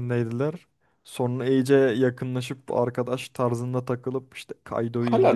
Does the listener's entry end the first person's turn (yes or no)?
yes